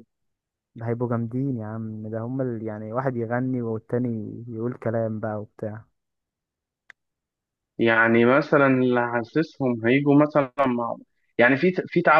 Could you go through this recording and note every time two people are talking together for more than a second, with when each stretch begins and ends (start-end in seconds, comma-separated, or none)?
none